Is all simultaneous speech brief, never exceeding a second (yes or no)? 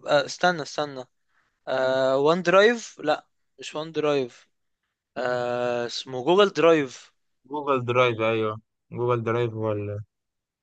yes